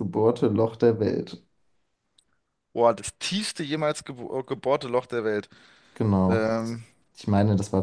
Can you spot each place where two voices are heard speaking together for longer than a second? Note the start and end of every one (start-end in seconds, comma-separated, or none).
none